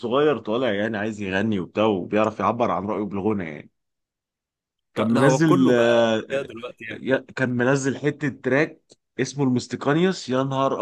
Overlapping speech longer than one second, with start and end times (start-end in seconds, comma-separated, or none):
5.0-6.2